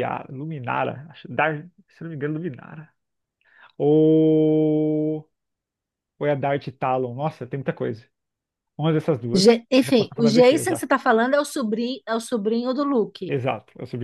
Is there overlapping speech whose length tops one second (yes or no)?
yes